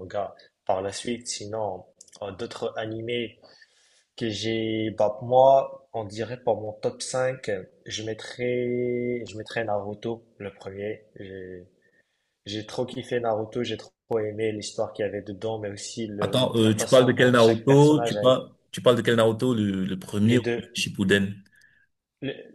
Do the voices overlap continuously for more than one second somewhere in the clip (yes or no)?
yes